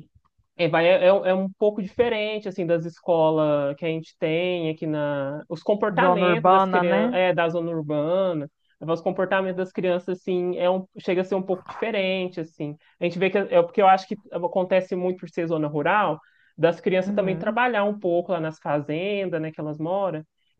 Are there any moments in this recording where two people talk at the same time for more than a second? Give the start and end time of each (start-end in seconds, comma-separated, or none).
5.9-7.2